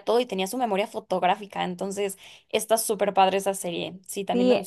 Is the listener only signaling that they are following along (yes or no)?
no